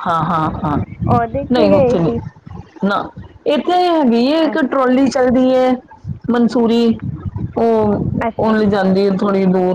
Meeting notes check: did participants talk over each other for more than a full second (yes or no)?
no